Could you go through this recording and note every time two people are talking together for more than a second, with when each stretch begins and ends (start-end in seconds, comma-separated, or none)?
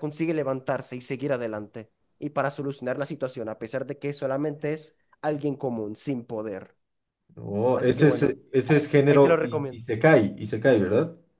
7.7-9.8